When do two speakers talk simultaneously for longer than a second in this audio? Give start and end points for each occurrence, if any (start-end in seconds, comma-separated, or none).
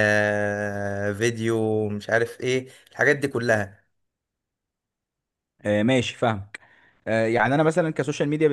none